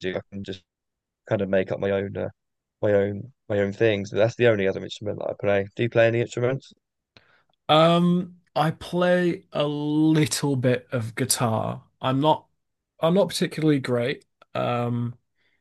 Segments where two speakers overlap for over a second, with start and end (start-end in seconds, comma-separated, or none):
none